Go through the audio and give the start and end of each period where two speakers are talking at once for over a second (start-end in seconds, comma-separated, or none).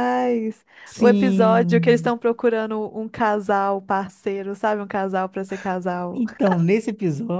0.8-2.1